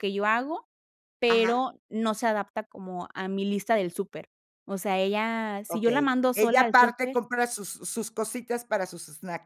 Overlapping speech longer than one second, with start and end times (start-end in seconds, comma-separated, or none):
5.7-7.2